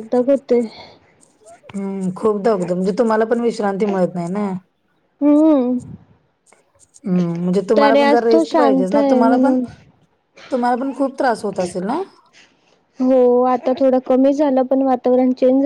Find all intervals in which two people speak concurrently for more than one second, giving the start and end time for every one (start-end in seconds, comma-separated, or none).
7.8-9.5